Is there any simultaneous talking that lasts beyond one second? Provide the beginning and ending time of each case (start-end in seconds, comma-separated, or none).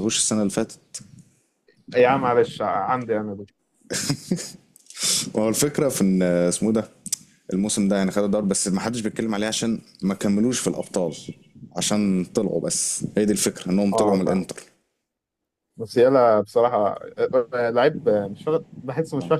none